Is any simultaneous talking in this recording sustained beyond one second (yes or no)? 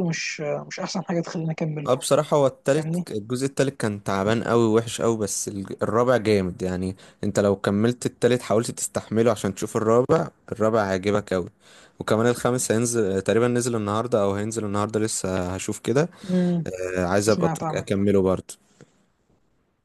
no